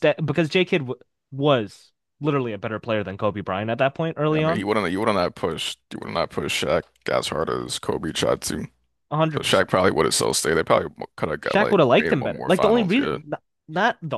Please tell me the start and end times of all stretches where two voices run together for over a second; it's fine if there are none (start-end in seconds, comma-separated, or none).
11.4-13.2